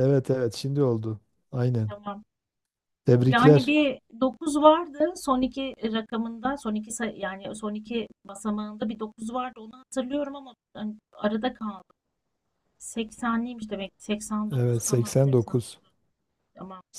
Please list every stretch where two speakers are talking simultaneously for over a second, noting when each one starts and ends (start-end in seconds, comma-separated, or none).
14.6-15.8